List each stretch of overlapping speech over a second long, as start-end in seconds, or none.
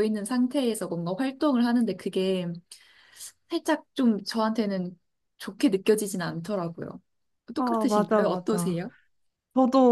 7.6-8.8